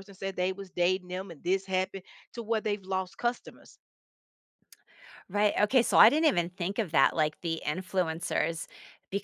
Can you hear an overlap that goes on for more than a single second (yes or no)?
no